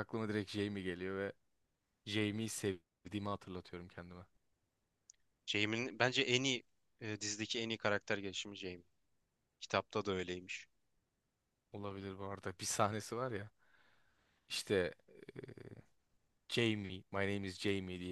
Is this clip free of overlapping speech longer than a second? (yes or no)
yes